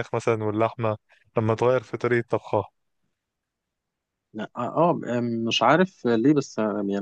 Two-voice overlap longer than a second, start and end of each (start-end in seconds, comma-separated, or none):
none